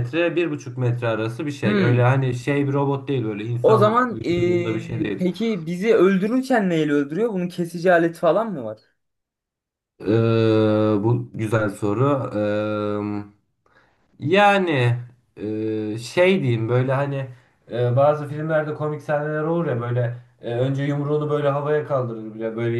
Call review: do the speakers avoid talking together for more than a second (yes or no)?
no